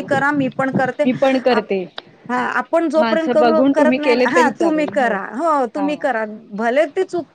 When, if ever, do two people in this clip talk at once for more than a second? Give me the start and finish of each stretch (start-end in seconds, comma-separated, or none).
3.0-4.9